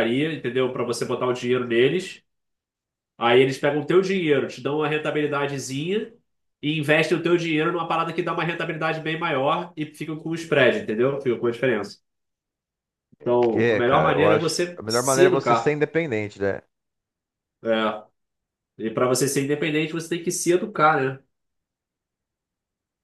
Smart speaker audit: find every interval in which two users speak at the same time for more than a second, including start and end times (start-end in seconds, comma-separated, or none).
13.5-15.8